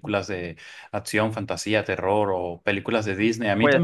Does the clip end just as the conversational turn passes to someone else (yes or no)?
no